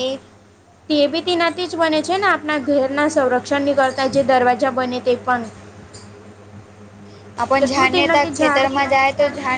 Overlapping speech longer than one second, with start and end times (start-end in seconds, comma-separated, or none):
7.6-9.0